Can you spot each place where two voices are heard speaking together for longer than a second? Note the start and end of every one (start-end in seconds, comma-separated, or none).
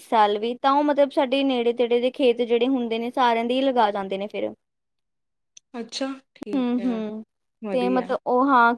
none